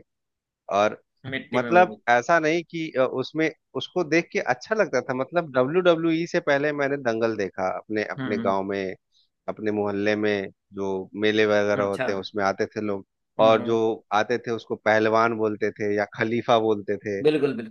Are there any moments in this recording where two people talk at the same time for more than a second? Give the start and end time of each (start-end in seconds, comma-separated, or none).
none